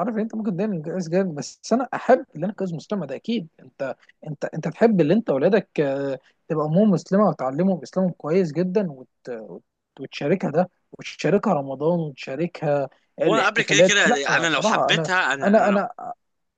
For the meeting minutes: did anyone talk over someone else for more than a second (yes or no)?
yes